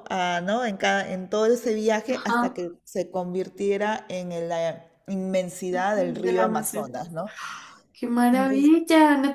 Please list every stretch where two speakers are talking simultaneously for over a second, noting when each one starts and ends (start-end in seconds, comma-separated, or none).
5.7-6.9